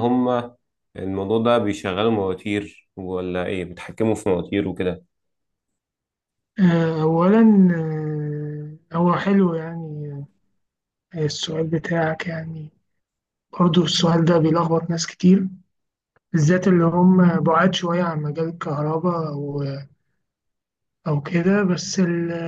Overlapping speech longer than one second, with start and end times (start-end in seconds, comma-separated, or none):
none